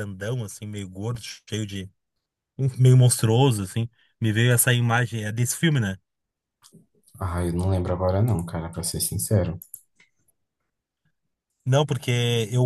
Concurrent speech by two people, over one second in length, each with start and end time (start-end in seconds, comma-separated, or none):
none